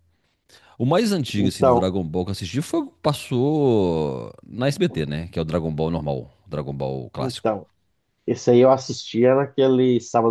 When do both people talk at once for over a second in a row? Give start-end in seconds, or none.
none